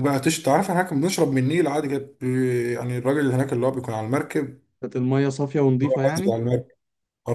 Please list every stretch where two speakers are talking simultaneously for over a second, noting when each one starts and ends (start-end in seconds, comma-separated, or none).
none